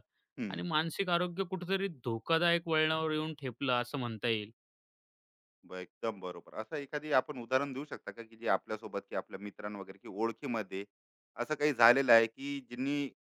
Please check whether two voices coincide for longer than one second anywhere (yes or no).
no